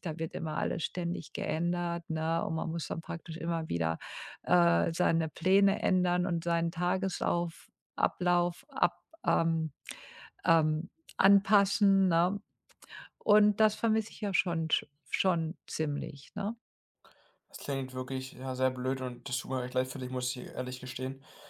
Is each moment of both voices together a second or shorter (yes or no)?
yes